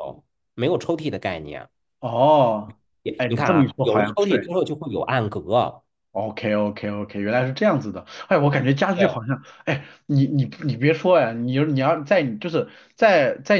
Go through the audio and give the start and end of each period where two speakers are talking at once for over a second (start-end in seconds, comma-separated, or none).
3.2-4.5